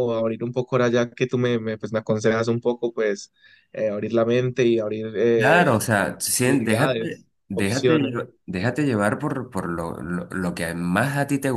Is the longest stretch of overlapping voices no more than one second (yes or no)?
no